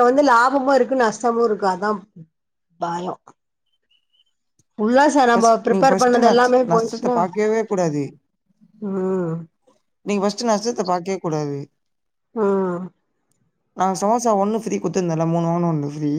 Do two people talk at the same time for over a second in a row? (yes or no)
yes